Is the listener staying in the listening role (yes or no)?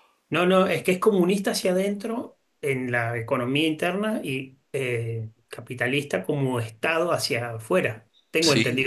no